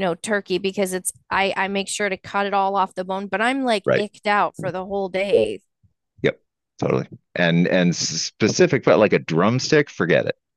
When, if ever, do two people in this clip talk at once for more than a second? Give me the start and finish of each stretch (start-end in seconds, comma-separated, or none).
none